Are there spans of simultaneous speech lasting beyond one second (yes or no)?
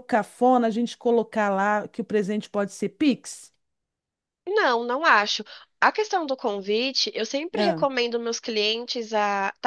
no